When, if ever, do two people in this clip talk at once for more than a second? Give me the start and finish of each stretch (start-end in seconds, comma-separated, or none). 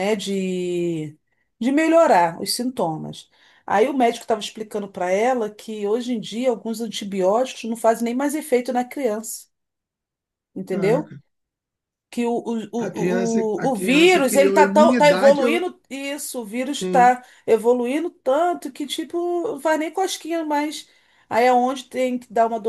12.8-15.6